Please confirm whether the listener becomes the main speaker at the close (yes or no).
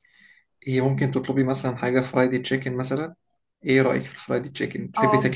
yes